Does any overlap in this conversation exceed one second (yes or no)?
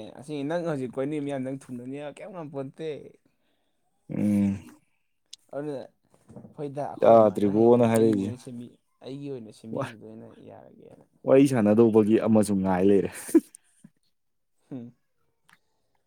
yes